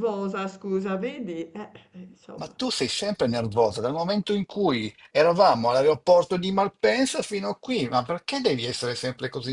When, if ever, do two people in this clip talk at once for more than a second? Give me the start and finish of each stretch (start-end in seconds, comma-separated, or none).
none